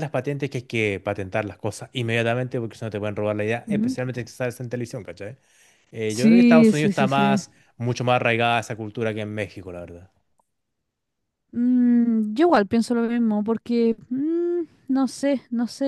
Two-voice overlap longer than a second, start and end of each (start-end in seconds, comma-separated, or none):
6.1-7.4